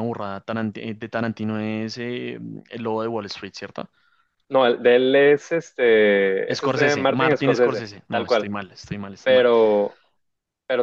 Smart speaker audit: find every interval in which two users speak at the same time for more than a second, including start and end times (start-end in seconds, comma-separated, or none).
6.5-8.5